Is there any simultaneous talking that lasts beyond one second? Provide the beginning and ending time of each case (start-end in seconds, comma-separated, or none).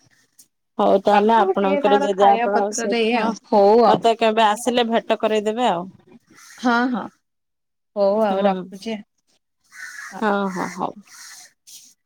1.1-3.2